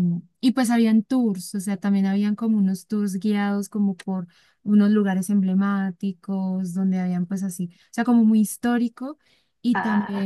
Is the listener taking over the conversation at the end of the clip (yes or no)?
no